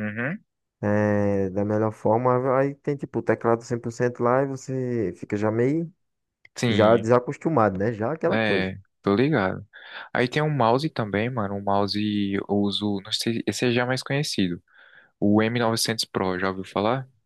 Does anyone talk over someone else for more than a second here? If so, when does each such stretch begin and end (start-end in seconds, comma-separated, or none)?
none